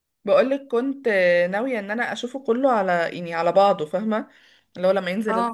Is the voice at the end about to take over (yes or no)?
no